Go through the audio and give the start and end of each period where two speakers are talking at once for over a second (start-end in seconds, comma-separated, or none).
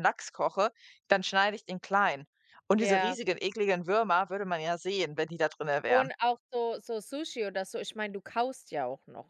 none